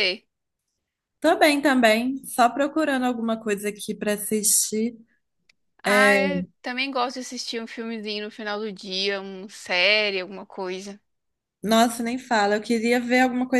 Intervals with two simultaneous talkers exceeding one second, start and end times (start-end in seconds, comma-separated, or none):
none